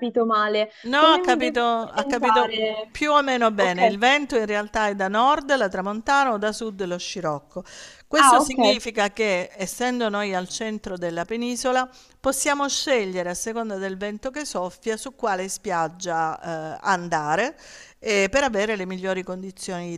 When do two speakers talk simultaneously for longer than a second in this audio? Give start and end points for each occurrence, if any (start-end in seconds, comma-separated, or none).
0.8-2.5